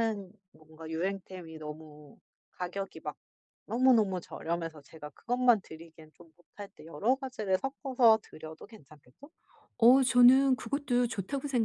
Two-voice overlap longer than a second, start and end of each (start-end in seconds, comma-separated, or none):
none